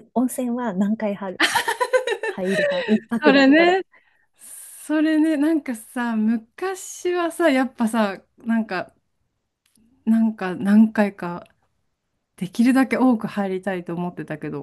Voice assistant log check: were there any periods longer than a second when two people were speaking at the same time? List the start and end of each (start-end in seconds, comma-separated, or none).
none